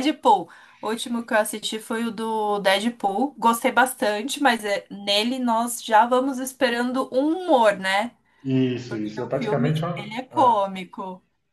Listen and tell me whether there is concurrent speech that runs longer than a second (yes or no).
yes